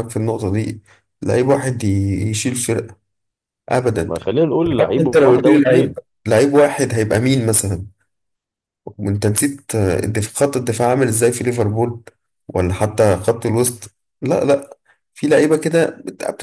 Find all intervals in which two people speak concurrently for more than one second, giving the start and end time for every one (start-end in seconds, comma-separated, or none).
4.8-6.0